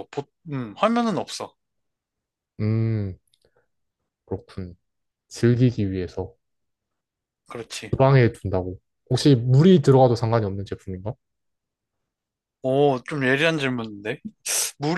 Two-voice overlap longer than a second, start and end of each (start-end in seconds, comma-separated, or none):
none